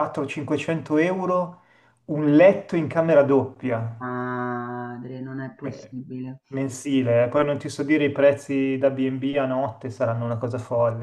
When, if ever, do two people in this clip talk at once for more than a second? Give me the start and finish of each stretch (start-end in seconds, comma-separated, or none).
none